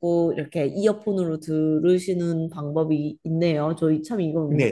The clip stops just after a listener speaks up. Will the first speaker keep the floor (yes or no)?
no